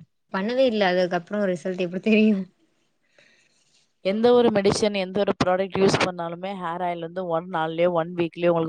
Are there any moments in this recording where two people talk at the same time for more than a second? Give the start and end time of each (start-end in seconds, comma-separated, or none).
none